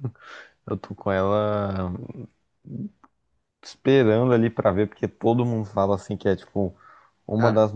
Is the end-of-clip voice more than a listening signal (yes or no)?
no